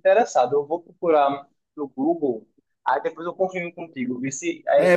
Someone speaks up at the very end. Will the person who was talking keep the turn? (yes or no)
no